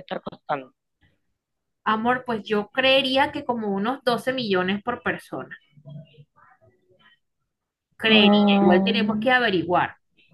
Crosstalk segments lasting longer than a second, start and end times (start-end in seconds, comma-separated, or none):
8.1-9.3